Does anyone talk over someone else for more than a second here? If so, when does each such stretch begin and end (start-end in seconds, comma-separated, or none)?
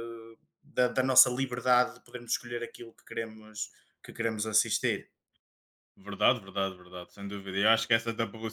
none